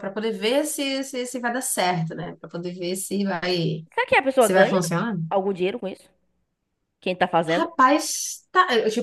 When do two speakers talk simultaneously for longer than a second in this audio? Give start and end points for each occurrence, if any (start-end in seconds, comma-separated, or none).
none